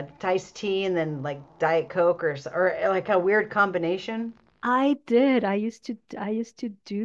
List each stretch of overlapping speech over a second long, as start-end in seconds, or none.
none